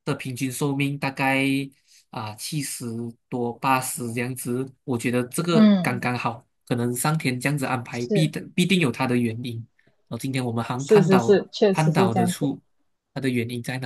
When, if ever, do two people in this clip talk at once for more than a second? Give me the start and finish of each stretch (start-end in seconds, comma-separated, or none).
10.8-12.5